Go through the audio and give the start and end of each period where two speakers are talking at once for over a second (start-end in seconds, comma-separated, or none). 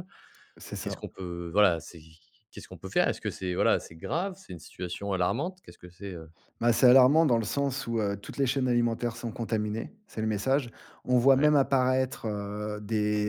none